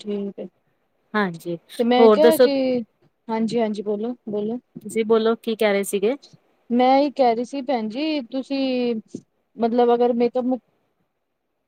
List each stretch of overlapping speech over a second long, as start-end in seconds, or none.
none